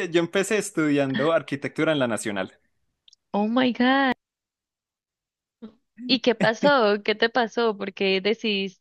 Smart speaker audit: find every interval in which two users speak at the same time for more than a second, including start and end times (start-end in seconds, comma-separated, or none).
none